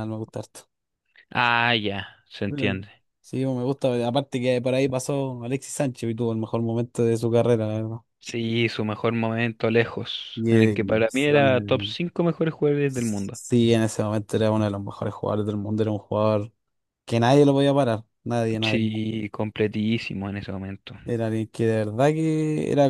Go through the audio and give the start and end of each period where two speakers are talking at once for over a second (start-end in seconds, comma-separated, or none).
10.3-12.0